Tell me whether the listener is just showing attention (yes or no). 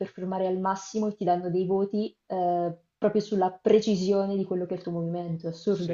no